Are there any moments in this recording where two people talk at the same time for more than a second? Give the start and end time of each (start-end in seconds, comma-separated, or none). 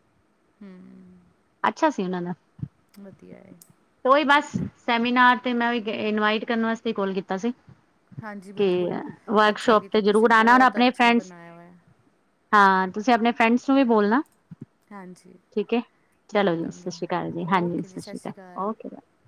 9.5-11.3